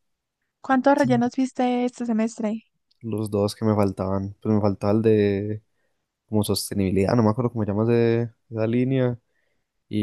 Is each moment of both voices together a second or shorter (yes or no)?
yes